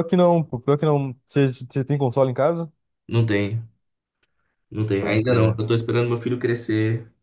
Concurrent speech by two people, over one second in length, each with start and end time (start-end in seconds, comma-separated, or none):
none